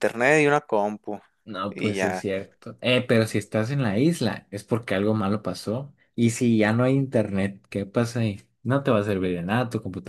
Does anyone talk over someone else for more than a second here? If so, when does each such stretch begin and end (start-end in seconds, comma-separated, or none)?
none